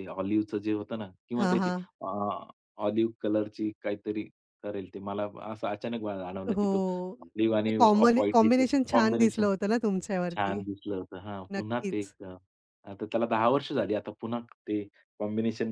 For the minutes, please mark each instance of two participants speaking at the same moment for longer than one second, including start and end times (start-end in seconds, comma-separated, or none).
7.7-9.5